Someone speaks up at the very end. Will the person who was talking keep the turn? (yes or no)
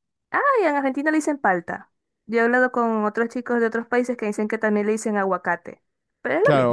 no